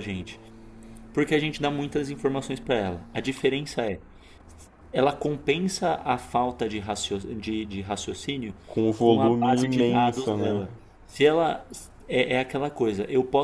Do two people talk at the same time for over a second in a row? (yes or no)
yes